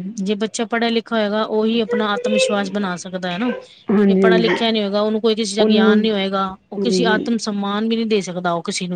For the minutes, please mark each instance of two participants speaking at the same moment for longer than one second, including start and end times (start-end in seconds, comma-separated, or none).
none